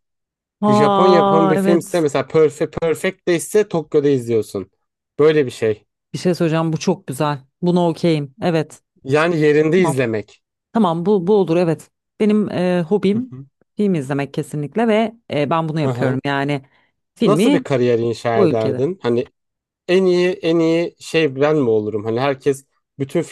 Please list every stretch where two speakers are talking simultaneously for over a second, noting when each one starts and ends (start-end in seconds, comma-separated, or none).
0.7-2.0